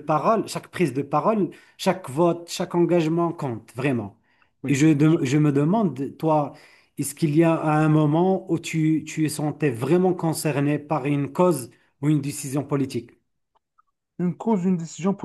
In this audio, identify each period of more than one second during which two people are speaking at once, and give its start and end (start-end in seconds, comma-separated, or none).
none